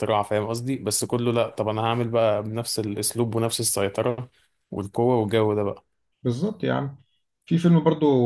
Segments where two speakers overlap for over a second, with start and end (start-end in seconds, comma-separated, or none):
none